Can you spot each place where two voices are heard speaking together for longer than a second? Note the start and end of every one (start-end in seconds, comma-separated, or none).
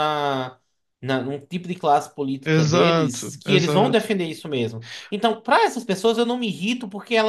2.4-4.1